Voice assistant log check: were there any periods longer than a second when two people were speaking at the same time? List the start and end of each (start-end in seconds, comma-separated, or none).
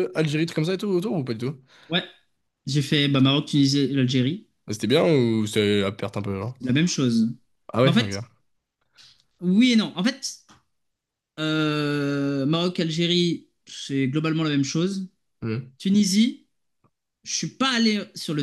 none